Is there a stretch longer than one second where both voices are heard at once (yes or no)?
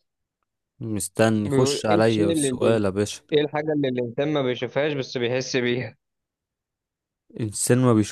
yes